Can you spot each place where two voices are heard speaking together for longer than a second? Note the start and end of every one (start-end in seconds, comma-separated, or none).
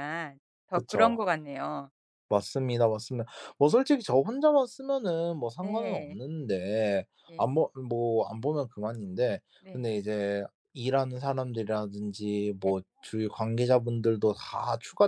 none